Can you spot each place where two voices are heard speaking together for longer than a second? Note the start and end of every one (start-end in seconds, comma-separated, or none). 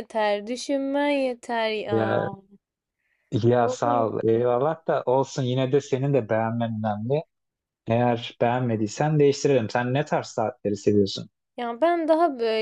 none